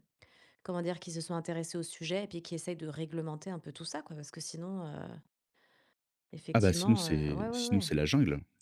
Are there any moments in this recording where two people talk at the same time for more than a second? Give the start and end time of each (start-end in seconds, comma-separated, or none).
6.5-7.9